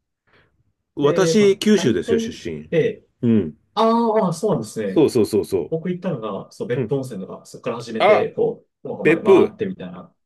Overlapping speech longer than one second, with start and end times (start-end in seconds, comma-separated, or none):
1.0-2.3